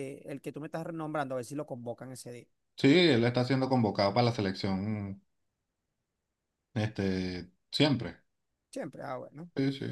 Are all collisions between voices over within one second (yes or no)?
yes